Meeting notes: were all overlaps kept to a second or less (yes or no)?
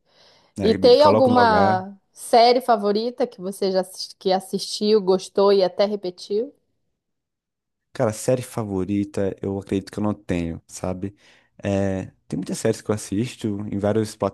no